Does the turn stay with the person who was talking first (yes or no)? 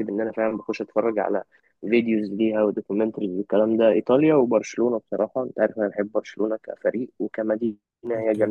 no